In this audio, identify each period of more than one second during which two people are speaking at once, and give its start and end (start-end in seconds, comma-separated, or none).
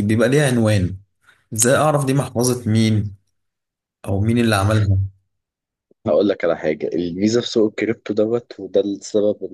none